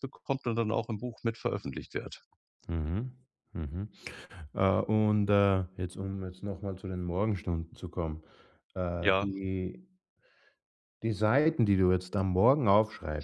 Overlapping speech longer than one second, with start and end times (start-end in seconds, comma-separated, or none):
none